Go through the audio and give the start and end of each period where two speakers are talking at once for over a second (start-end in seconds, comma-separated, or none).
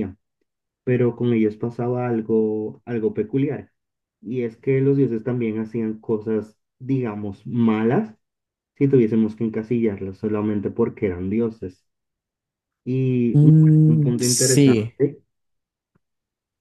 13.3-14.9